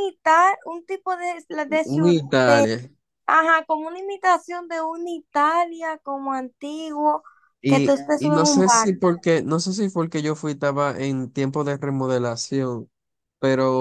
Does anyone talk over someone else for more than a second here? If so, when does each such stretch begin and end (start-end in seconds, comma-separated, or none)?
7.7-9.0